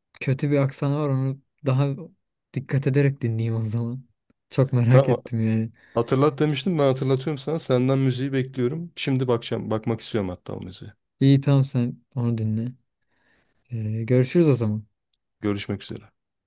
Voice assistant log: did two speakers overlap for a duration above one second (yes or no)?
no